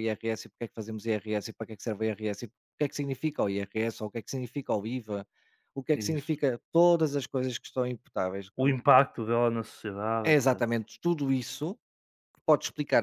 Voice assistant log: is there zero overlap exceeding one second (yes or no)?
yes